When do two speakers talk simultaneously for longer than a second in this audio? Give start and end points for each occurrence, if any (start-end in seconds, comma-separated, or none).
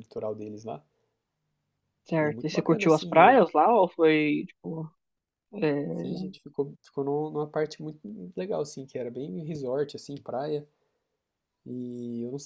2.2-3.4